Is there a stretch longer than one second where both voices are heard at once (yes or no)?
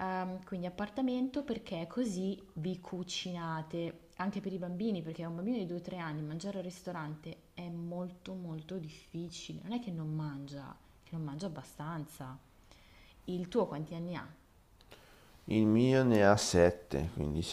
no